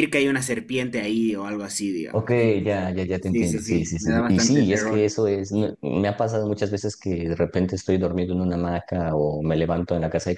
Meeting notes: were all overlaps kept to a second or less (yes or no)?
no